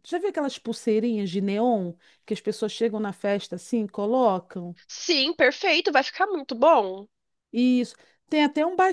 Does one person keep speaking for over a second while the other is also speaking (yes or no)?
no